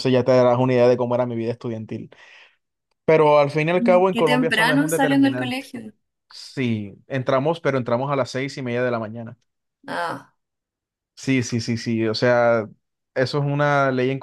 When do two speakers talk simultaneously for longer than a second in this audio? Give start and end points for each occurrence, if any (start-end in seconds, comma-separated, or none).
4.1-5.7